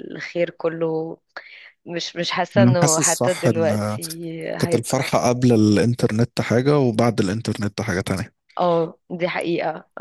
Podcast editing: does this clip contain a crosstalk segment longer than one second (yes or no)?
yes